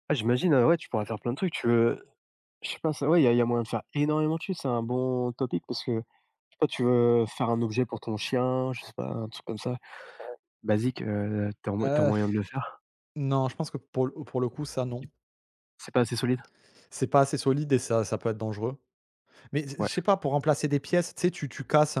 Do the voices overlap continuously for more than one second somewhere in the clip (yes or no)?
no